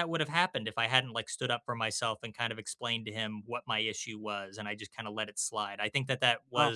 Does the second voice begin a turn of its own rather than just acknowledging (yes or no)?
no